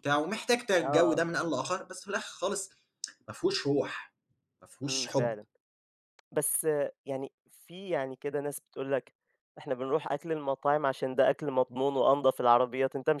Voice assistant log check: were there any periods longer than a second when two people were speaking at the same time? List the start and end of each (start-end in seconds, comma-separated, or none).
none